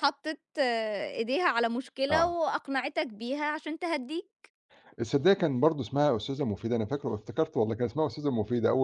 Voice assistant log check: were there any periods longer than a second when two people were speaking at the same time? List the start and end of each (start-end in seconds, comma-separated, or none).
none